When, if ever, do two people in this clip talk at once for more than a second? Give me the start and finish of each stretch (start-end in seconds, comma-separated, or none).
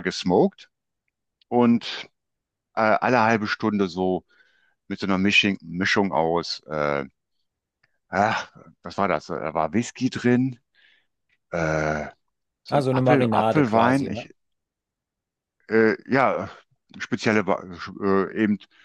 12.7-14.3